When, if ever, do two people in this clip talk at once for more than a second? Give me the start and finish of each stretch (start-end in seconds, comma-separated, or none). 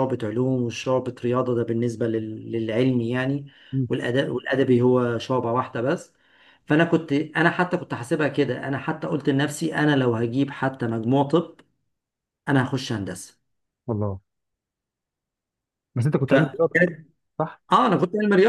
none